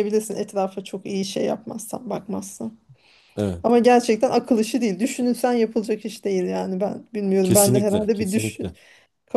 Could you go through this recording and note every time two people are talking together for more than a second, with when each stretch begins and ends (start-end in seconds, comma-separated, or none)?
7.4-8.7